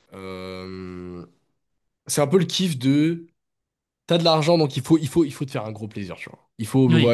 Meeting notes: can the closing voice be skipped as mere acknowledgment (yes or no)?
yes